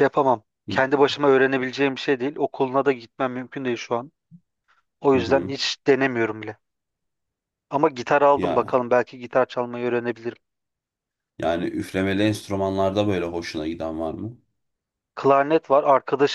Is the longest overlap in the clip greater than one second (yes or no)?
no